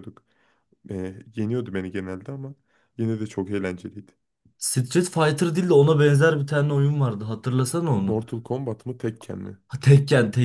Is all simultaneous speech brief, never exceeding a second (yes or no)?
yes